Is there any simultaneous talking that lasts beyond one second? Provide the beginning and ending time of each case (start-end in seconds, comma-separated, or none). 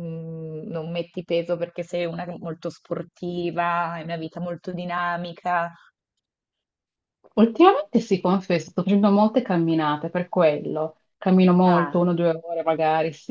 none